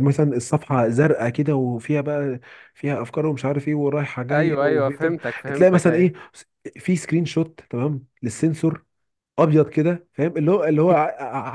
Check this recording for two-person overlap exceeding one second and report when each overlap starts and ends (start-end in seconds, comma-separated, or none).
4.3-6.1